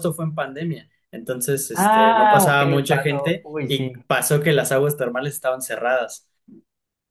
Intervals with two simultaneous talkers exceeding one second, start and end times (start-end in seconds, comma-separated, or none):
1.7-4.0